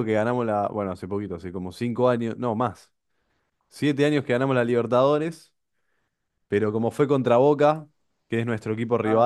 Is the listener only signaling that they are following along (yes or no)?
yes